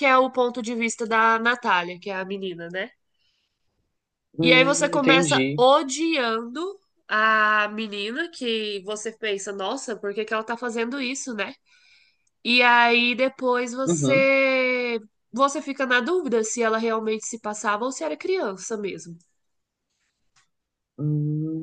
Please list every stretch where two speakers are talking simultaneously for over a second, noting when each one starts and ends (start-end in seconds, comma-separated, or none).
4.4-5.6